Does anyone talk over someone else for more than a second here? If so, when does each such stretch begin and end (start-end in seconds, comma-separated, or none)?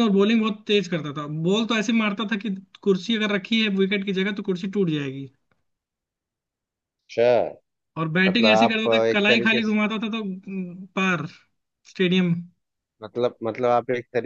8.3-9.8